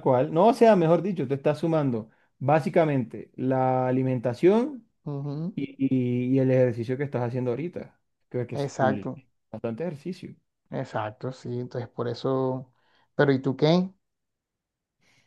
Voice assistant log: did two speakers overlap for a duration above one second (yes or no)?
no